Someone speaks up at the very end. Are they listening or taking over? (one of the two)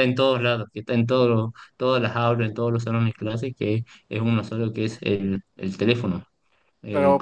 taking over